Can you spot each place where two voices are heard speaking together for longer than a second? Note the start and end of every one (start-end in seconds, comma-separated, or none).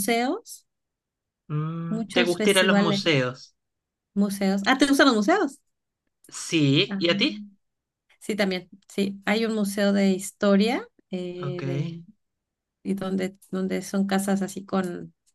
1.9-3.3